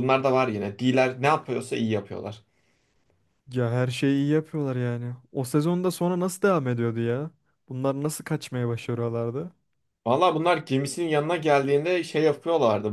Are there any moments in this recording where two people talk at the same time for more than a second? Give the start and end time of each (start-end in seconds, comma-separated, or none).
none